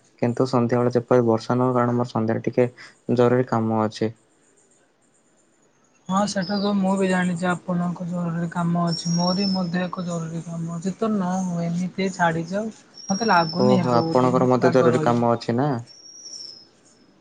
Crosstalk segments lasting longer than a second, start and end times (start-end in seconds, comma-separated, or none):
13.6-15.2